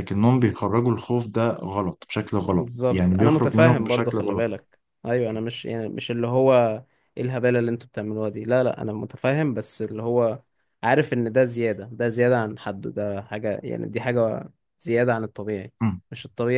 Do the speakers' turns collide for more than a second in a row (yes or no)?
yes